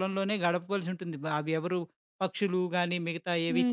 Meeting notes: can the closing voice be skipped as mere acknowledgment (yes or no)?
no